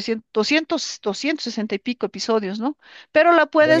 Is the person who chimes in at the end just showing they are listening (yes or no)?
yes